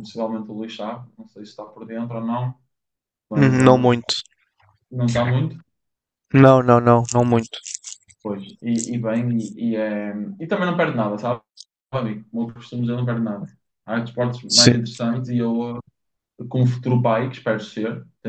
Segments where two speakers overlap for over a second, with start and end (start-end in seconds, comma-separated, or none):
none